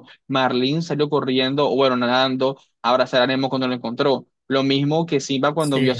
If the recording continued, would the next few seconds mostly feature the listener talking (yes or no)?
no